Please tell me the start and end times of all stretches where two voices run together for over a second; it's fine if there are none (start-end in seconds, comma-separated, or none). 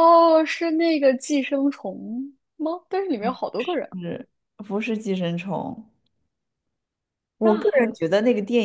none